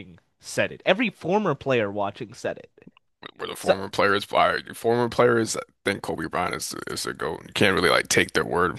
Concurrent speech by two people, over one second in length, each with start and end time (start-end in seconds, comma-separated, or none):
none